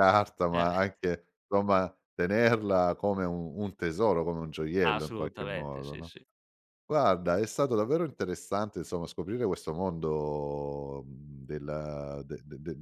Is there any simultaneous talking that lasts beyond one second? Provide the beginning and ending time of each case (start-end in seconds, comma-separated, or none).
4.8-6.1